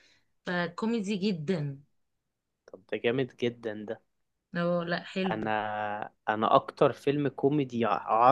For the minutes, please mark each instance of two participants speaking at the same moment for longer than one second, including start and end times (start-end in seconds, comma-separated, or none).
none